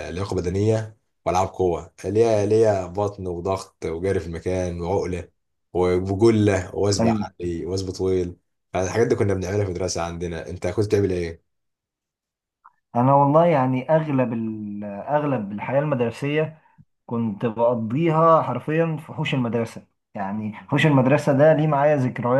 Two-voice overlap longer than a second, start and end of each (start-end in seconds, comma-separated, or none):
none